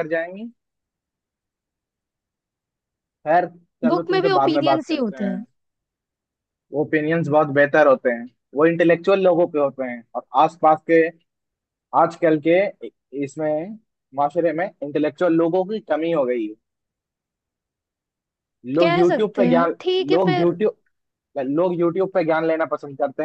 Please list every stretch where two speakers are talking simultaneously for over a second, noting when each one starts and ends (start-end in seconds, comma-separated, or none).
3.9-5.4, 18.8-20.6